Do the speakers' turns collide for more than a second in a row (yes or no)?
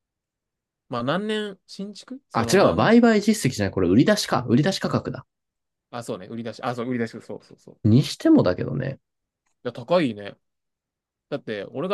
no